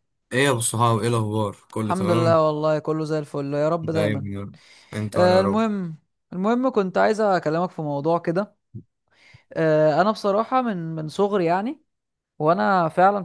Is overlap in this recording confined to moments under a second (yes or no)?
yes